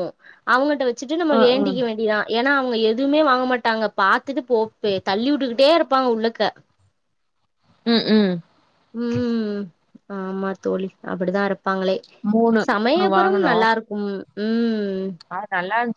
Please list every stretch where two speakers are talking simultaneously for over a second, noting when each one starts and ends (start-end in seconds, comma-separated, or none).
none